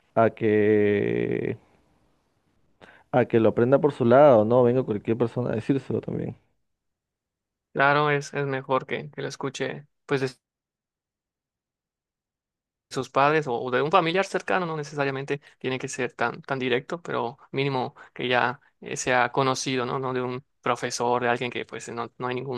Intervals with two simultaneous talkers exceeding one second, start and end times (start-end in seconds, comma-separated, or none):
none